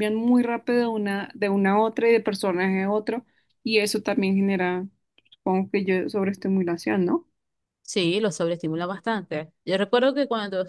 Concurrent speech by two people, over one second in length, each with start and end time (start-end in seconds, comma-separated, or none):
none